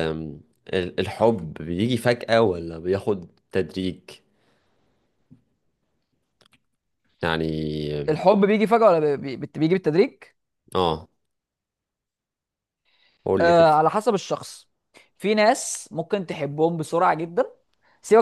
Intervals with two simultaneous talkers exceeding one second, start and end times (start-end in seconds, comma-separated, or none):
none